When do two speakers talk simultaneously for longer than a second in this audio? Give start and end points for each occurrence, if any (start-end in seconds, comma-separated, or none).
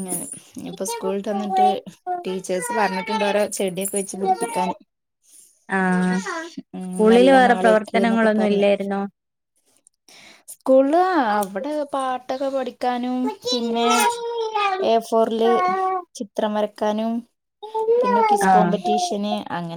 6.8-8.6